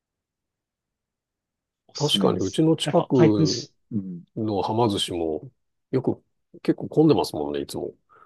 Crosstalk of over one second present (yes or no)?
yes